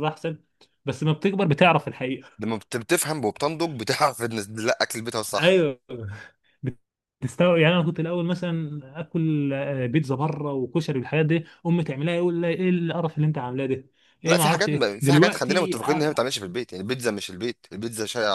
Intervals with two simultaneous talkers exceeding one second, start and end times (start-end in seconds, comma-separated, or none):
14.3-16.3